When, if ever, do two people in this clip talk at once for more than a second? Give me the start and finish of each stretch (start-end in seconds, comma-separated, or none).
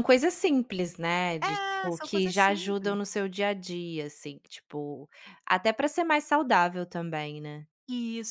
1.4-3.0